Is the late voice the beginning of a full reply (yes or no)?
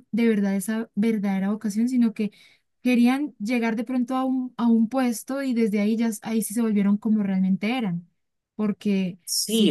yes